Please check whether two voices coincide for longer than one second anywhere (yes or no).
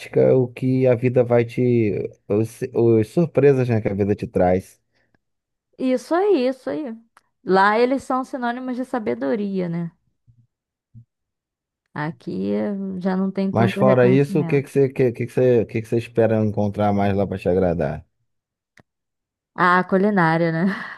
yes